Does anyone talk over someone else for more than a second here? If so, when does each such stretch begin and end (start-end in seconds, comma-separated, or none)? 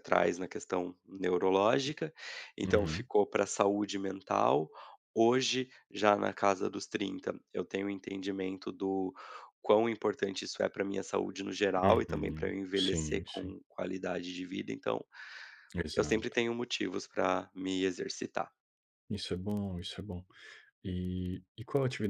11.8-13.6